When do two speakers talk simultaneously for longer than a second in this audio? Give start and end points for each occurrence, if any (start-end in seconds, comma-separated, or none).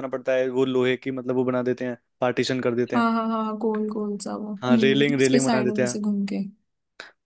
4.6-6.0